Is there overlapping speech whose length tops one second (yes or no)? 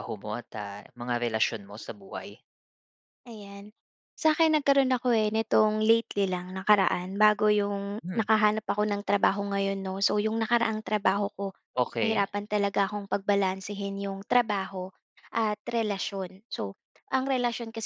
no